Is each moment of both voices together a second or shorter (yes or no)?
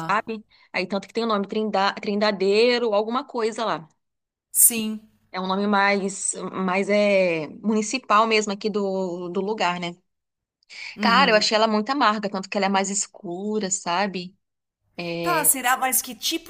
yes